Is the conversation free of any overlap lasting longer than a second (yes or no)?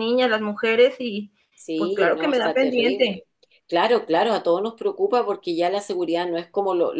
no